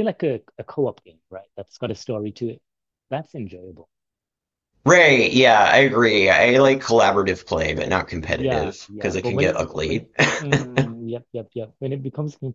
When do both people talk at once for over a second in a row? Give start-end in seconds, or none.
8.3-10.1